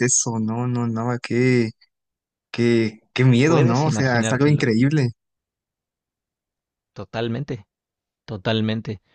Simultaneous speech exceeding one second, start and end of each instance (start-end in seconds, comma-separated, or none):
3.5-4.7